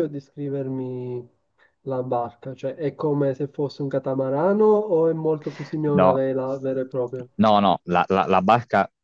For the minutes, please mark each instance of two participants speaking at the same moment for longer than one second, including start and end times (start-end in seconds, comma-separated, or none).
none